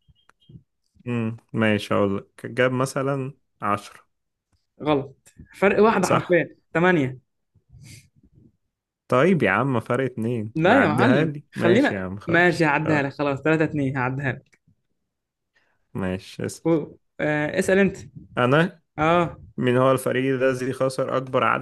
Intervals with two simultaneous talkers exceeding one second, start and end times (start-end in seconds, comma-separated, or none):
10.5-13.1